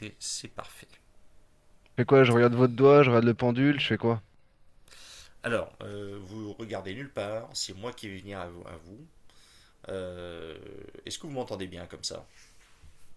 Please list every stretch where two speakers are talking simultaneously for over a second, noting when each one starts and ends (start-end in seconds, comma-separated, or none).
none